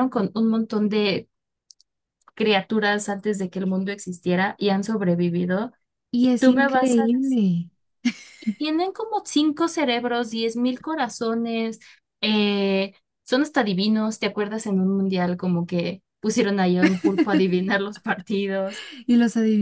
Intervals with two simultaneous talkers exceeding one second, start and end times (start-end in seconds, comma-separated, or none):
6.2-7.4